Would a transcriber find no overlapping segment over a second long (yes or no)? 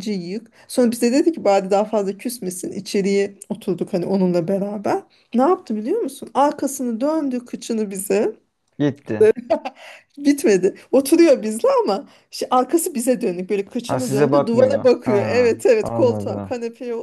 no